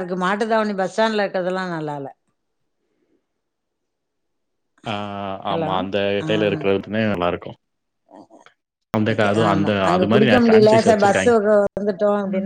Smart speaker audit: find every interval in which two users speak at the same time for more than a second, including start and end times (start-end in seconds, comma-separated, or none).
9.5-11.3